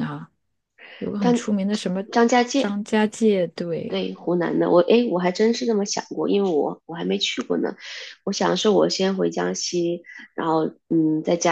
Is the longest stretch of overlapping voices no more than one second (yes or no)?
yes